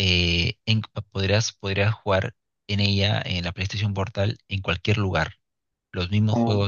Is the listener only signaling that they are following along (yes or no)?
yes